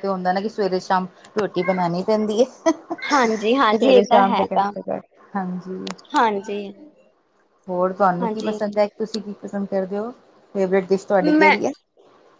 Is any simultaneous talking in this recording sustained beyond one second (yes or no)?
yes